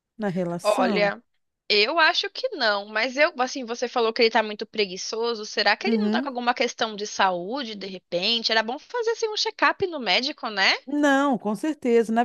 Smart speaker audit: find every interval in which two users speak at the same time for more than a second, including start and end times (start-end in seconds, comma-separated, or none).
none